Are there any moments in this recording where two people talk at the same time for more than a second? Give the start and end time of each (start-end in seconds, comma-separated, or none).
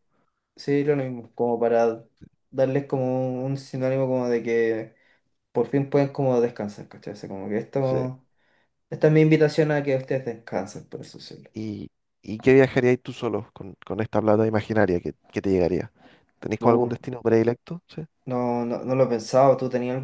none